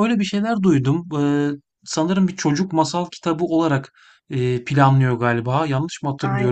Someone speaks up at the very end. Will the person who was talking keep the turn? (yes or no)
no